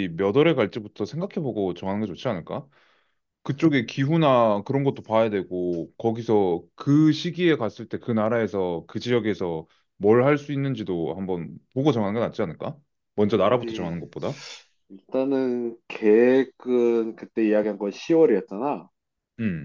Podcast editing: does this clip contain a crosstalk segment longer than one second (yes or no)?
no